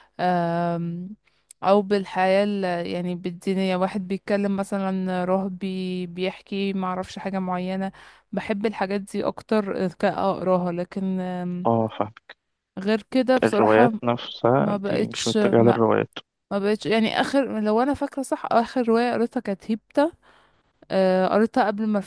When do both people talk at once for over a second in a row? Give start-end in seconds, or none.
14.6-15.8